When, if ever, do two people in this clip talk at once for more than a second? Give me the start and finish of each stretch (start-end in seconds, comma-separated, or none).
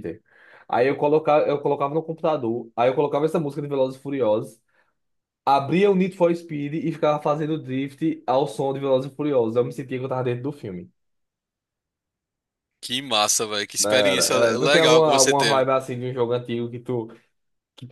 13.8-15.6